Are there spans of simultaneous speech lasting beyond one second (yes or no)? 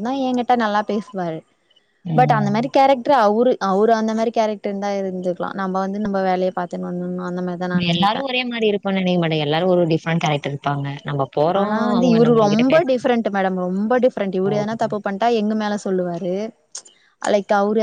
no